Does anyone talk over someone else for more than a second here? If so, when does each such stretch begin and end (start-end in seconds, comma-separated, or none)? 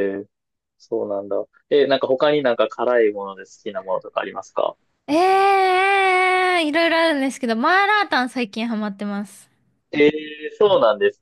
none